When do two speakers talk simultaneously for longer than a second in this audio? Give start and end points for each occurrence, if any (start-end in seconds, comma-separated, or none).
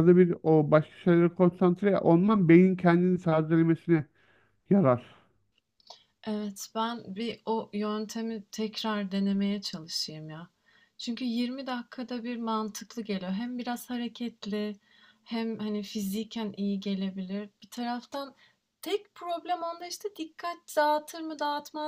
none